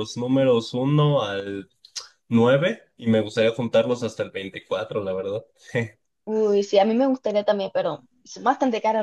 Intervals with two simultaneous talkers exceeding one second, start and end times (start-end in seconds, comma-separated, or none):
none